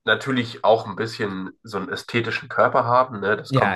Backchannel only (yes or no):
yes